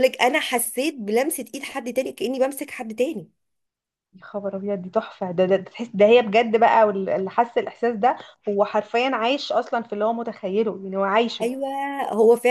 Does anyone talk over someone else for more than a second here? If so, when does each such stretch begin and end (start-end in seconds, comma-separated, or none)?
none